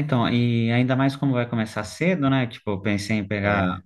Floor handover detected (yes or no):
no